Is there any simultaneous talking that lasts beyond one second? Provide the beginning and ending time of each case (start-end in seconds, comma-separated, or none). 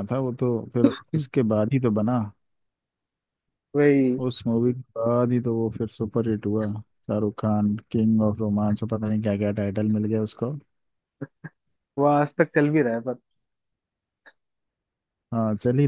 none